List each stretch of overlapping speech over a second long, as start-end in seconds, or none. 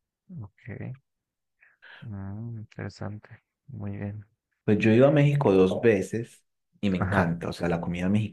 none